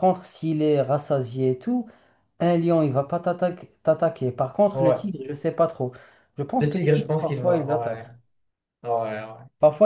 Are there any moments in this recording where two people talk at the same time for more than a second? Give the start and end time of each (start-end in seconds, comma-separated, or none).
6.6-8.1